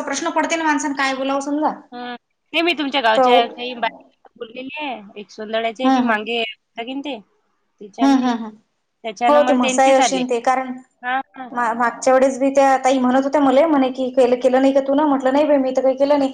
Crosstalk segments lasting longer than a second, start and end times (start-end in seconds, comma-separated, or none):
none